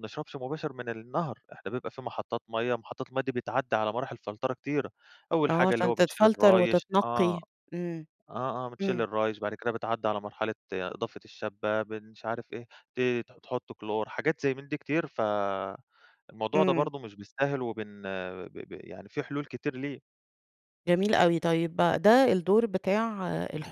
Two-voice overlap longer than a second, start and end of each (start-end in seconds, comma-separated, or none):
5.5-7.4